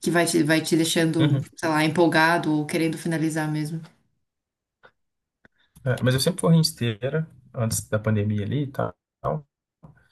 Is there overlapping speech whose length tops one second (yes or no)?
no